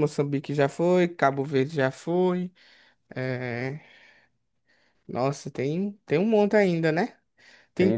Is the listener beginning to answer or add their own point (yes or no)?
yes